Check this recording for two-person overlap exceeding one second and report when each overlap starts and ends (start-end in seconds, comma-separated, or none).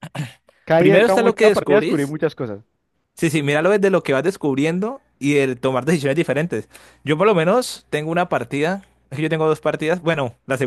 0.8-2.1